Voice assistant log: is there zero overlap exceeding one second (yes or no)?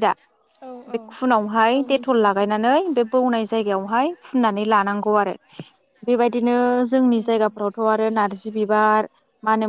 no